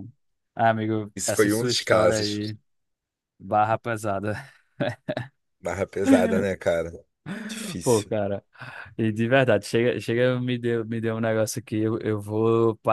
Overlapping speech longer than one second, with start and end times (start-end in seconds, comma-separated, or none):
1.2-2.5